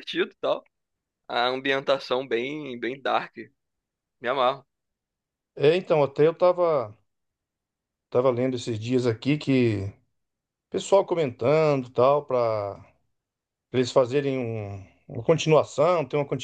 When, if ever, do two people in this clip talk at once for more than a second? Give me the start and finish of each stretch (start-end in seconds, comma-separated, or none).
none